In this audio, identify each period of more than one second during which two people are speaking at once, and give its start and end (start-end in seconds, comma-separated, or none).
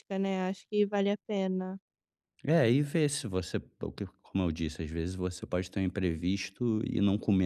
none